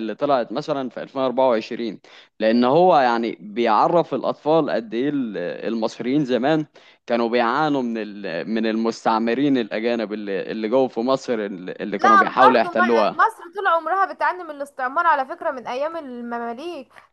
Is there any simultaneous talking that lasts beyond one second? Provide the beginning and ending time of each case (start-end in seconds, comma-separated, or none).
12.0-13.2